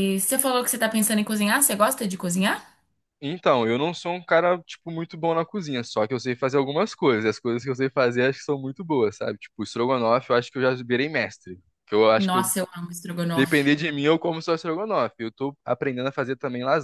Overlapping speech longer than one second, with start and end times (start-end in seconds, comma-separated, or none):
none